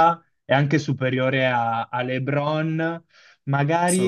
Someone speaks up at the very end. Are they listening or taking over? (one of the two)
listening